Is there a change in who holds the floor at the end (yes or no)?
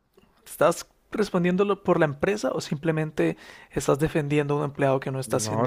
yes